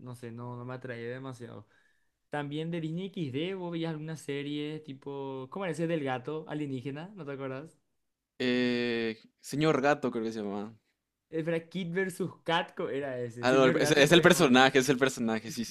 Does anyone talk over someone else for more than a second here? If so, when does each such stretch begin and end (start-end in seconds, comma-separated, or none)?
13.4-14.7